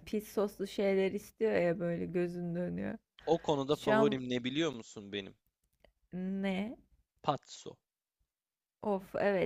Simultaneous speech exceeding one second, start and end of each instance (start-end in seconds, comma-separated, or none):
none